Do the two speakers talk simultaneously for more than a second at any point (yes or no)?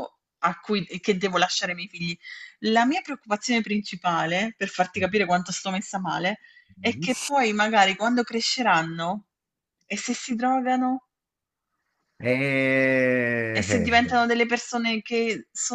no